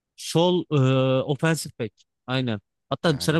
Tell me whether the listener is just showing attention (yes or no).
yes